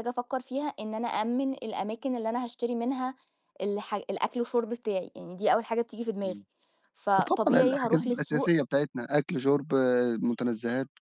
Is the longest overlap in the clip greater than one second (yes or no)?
yes